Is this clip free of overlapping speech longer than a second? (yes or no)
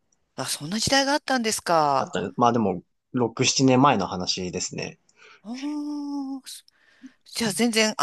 yes